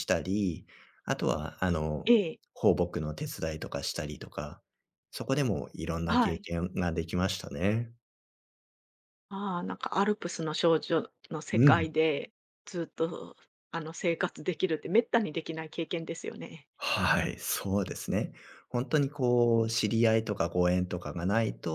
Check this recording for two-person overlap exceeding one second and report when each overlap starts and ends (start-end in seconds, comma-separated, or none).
none